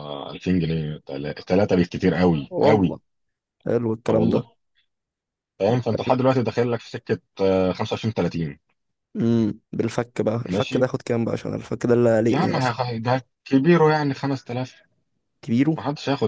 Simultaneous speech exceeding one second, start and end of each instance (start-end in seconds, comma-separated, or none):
none